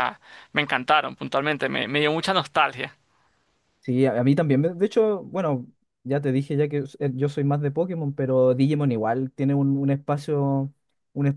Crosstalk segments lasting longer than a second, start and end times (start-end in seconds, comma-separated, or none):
none